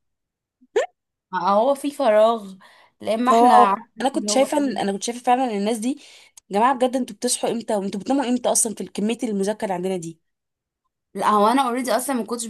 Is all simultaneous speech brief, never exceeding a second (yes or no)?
no